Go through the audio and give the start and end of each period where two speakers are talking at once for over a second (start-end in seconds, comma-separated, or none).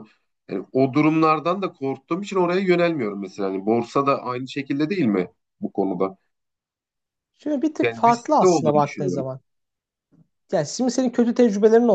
7.8-9.3